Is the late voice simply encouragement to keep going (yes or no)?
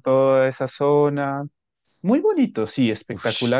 no